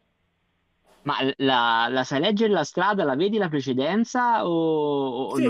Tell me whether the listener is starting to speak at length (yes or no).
yes